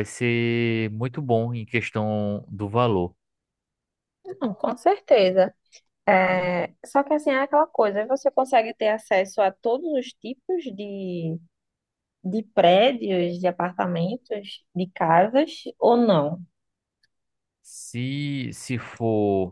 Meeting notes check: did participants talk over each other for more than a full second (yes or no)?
no